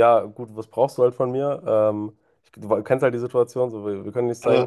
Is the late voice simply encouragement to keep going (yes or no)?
yes